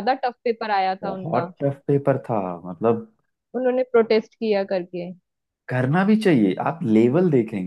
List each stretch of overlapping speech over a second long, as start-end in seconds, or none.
none